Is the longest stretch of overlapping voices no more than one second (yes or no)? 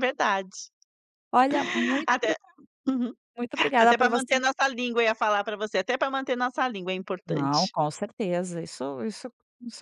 yes